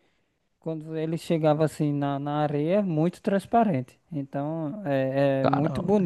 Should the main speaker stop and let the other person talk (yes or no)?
no